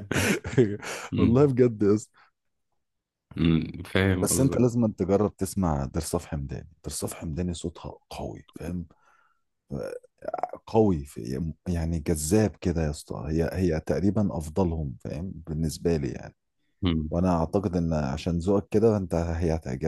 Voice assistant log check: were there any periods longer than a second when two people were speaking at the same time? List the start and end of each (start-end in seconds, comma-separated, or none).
none